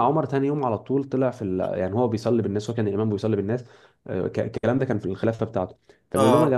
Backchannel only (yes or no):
yes